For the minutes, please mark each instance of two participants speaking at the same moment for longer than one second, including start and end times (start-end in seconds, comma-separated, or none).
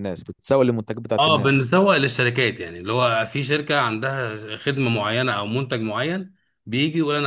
none